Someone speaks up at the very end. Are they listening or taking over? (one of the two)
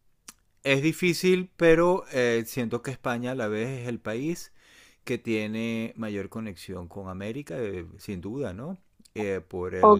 taking over